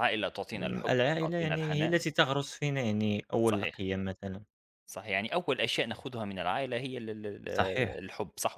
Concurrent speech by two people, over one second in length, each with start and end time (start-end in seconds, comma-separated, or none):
0.6-2.0